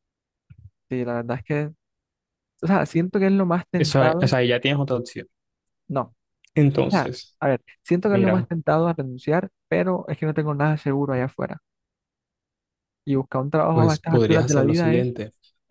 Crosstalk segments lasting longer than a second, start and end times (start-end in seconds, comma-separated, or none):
13.7-15.1